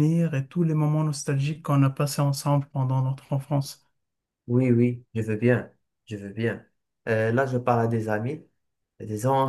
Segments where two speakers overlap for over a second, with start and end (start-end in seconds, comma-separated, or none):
none